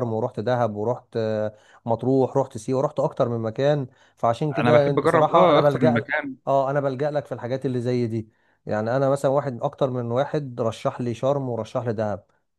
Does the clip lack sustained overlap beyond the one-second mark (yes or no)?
no